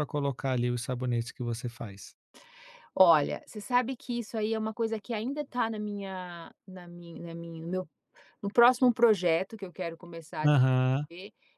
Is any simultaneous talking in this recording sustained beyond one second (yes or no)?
no